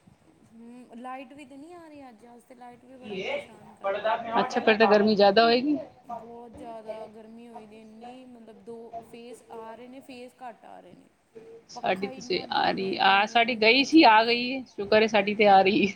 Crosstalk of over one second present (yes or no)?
yes